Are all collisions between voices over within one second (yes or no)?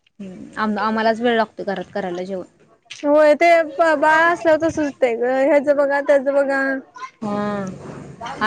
yes